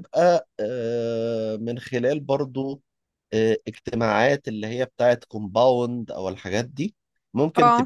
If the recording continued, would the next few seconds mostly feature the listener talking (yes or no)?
no